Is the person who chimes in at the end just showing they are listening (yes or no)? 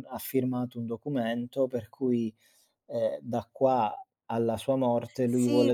no